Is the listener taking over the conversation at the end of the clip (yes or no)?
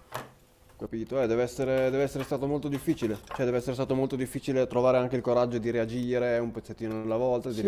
yes